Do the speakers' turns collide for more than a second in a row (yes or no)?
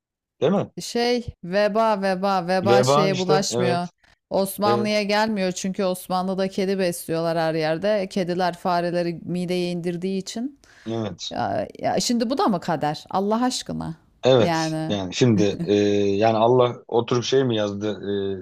yes